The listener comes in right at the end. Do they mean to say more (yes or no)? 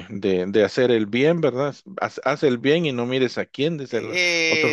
yes